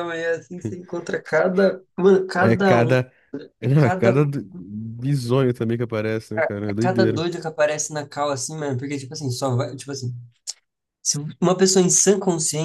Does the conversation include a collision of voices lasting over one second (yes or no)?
no